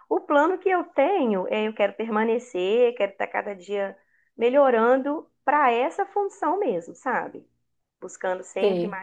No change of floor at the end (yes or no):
yes